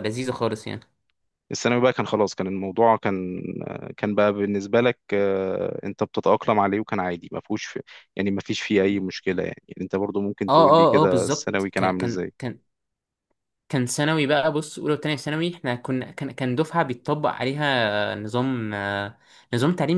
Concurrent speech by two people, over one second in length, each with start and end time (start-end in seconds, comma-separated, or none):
10.5-12.3